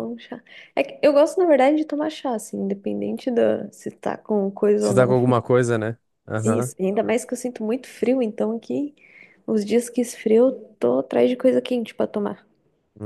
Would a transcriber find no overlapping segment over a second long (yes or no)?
yes